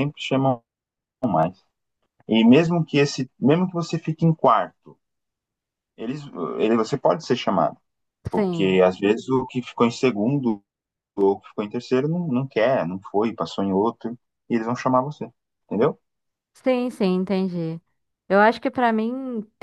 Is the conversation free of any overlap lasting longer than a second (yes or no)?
yes